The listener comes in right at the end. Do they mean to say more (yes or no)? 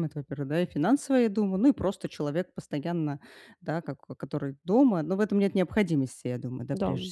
no